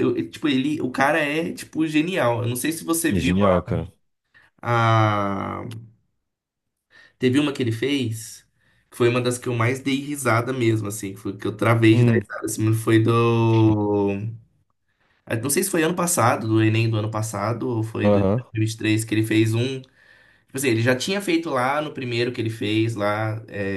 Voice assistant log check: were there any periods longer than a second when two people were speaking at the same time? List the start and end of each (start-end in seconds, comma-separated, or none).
none